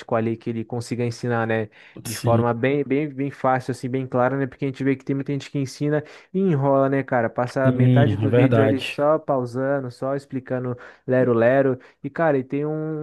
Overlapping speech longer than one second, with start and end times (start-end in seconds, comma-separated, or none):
7.6-9.0